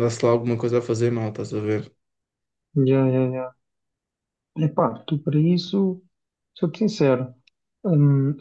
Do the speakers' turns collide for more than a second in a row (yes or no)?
no